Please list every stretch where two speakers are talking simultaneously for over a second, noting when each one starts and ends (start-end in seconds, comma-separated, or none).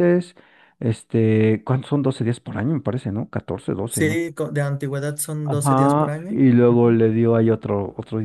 5.5-7.0